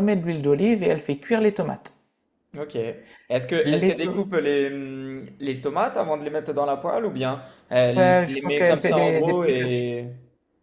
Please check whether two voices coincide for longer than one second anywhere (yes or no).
yes